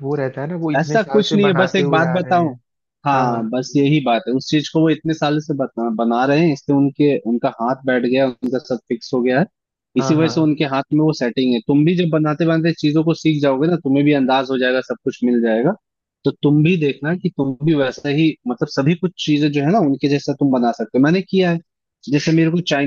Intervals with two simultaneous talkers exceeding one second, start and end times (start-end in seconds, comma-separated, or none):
0.8-2.5